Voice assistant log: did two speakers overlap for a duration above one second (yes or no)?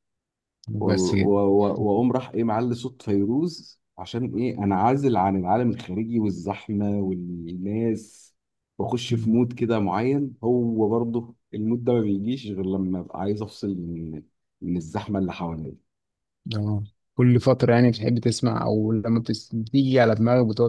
no